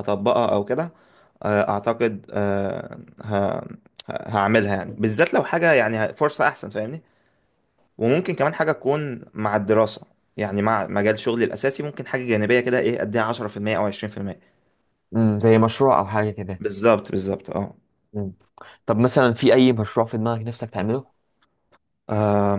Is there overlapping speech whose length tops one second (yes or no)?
no